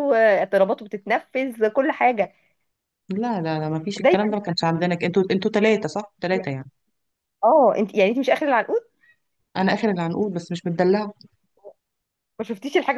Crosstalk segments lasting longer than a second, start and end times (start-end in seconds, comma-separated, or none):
none